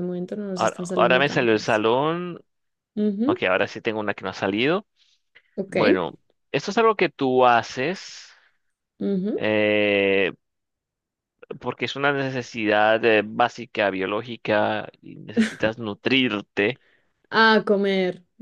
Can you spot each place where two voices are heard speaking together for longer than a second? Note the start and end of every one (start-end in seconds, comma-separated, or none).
0.6-1.8